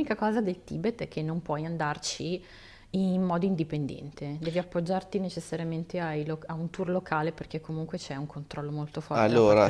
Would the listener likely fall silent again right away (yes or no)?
no